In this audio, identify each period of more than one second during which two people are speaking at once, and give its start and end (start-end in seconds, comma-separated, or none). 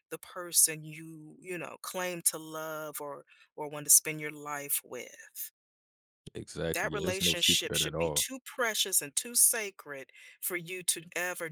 6.7-8.3